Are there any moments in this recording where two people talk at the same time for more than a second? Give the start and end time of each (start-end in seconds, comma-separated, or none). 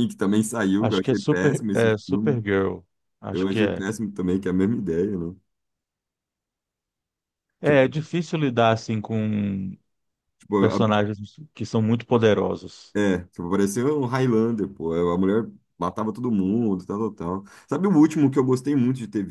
0.8-2.4